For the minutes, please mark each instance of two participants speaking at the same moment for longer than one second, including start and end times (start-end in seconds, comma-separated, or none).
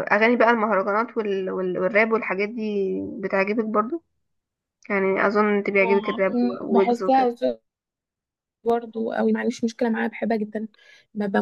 5.8-7.2